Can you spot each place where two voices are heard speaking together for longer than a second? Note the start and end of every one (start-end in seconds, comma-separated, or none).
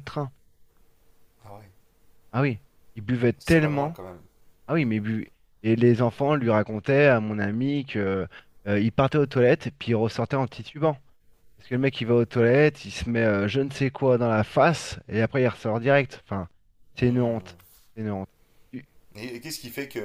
none